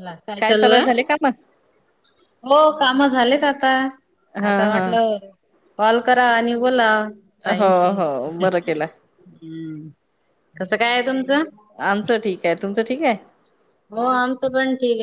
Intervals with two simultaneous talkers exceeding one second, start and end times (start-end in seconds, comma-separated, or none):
none